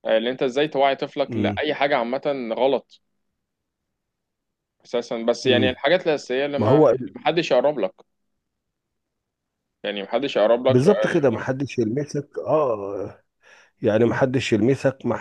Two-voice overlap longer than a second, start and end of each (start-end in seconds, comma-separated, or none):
none